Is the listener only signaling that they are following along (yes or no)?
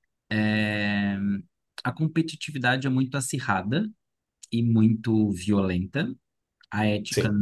yes